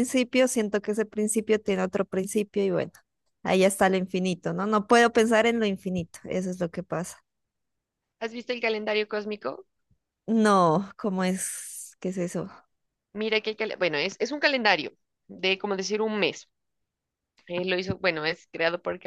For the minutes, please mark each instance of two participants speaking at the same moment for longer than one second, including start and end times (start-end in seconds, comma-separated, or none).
none